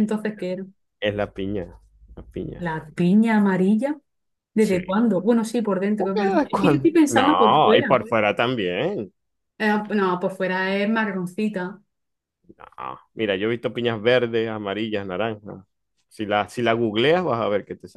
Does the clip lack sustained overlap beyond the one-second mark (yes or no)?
no